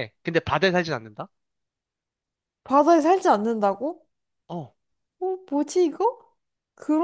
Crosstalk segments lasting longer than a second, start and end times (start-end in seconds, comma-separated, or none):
none